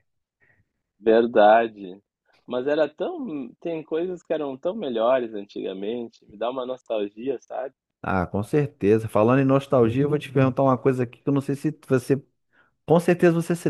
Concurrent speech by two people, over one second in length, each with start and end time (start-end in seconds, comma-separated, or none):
none